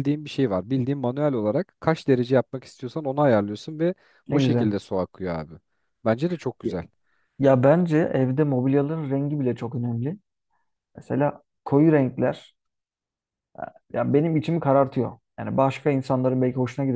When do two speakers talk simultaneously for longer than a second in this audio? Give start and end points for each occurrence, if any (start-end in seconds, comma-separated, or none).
none